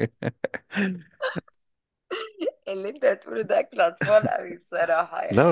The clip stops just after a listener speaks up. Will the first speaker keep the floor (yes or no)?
no